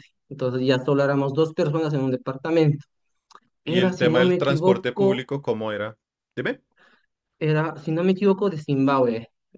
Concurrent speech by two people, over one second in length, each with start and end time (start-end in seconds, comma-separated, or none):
3.6-5.3